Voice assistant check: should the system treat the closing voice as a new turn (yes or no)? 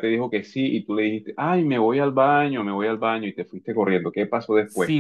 yes